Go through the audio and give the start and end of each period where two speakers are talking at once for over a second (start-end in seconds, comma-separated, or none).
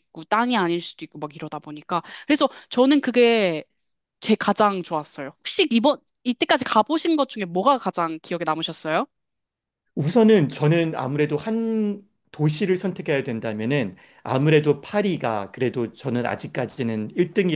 none